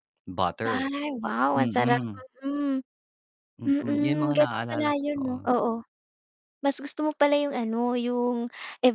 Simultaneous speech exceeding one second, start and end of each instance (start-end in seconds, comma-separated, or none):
3.6-5.5